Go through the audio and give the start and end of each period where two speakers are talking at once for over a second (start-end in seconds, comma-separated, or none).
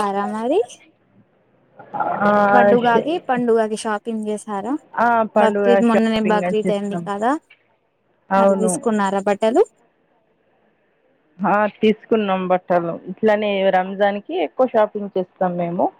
5.4-7.0